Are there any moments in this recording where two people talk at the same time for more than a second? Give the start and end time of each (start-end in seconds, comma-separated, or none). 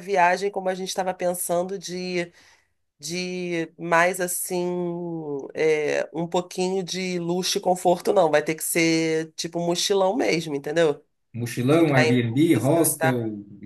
11.7-13.1